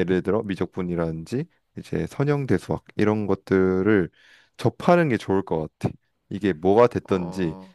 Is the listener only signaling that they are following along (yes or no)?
yes